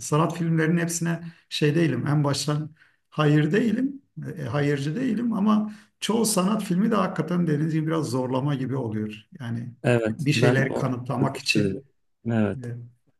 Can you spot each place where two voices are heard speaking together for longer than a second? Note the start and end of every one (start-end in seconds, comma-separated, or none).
10.2-11.8